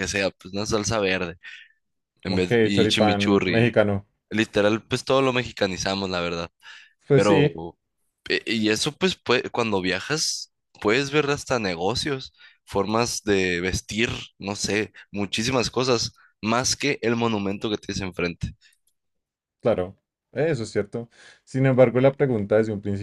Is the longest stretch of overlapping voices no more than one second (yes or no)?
no